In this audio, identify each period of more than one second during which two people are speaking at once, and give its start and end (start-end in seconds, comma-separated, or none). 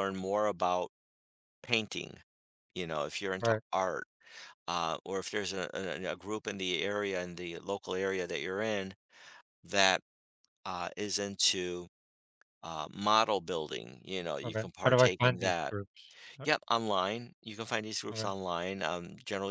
14.4-15.7